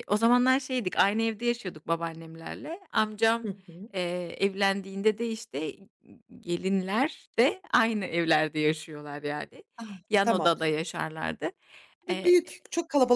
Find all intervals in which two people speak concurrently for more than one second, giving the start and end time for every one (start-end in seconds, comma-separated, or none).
none